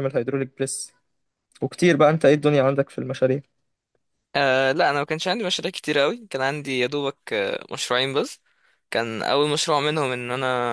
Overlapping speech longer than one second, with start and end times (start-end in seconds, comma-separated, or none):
none